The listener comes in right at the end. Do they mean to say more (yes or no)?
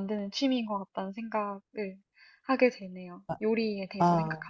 yes